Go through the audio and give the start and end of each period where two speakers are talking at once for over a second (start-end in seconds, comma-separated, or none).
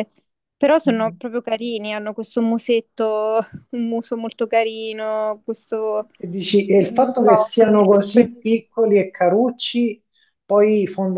6.8-8.5